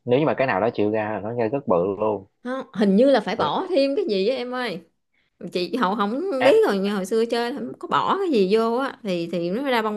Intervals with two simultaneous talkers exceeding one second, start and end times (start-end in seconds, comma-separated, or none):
none